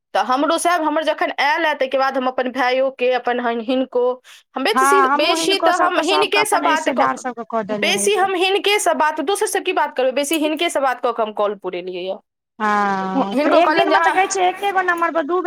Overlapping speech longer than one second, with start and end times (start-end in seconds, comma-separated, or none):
4.8-8.3